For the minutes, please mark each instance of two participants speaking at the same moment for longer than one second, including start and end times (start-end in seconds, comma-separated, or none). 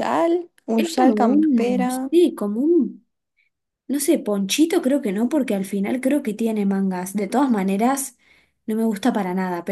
0.8-2.1